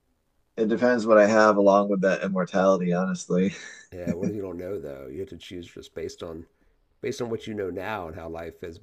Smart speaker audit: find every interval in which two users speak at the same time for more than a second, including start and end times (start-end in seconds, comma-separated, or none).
none